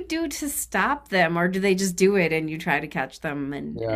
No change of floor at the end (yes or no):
no